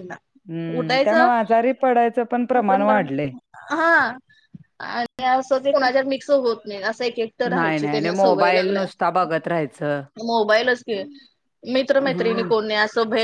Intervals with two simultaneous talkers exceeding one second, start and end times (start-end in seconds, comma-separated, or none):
7.5-8.8